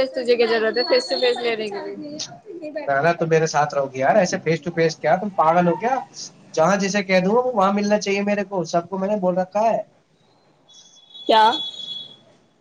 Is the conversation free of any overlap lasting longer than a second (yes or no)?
yes